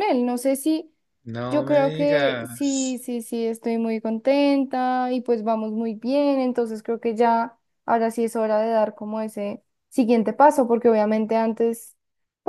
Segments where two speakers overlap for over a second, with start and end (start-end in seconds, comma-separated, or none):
1.5-3.0